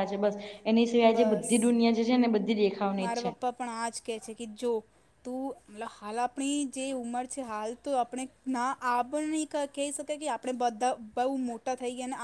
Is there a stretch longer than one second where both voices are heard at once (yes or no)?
no